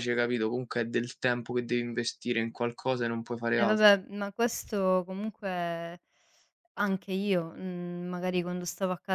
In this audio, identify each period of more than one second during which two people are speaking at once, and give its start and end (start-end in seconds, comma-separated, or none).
none